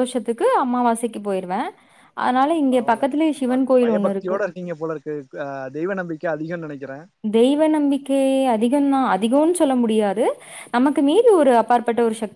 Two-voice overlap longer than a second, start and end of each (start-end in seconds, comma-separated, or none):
2.7-4.4